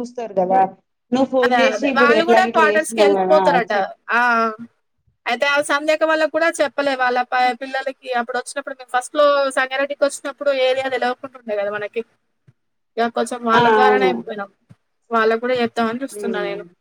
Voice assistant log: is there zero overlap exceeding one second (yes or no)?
no